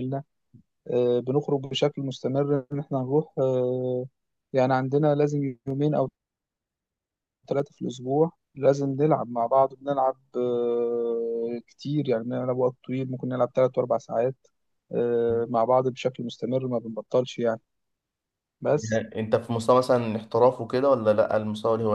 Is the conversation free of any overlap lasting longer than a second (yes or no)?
yes